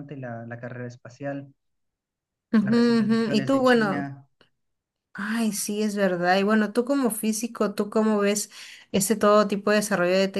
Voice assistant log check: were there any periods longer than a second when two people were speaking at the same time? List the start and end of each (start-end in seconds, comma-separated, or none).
2.6-4.1